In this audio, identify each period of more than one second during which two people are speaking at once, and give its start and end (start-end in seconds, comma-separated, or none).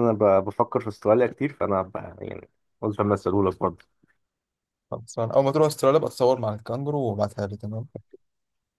none